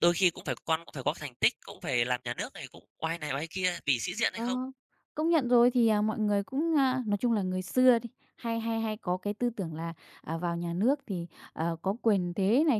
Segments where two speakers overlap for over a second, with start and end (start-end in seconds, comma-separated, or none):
none